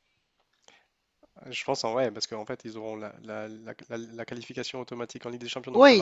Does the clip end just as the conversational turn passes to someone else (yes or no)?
yes